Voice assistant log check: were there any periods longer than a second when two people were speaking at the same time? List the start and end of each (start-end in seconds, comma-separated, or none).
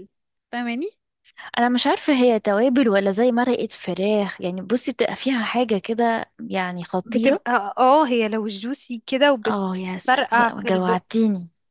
9.5-11.0